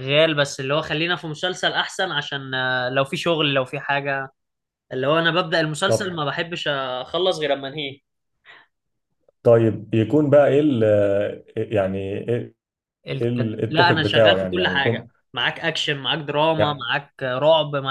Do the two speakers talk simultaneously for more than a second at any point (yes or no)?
yes